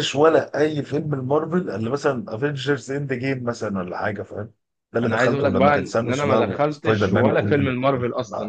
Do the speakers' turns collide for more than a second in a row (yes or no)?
yes